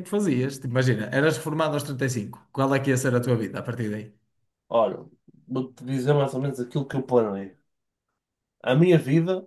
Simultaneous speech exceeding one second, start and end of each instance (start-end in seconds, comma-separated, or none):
none